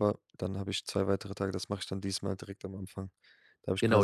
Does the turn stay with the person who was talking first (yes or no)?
no